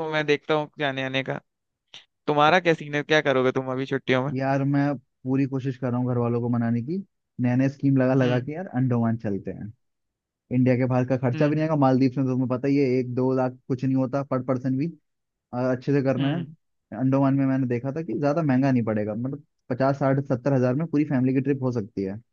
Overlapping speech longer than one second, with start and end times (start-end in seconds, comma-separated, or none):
none